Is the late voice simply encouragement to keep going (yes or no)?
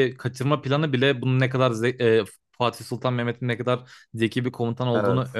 yes